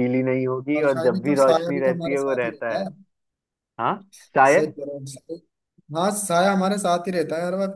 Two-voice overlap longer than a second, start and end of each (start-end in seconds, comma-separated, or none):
0.8-2.8